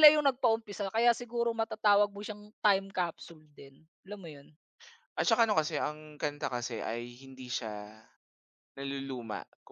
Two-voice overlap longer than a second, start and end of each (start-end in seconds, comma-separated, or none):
none